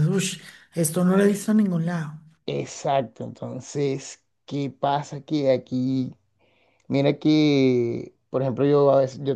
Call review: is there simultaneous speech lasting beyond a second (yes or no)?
no